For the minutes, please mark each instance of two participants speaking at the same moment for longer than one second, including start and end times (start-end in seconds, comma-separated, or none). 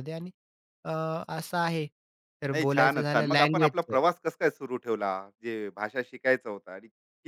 2.5-4.0